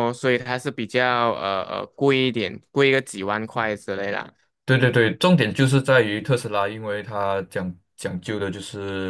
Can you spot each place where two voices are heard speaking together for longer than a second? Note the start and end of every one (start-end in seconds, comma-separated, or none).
none